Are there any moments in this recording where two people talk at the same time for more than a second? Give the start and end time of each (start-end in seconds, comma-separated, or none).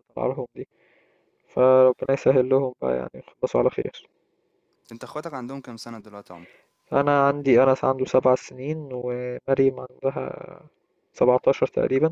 none